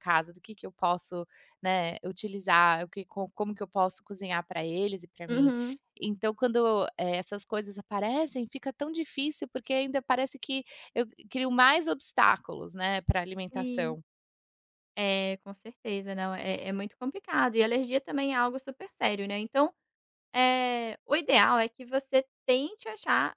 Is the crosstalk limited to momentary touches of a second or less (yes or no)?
yes